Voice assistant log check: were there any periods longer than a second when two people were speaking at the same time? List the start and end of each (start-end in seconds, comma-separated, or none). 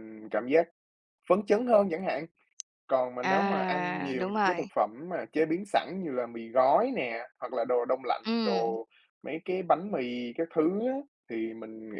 3.2-4.7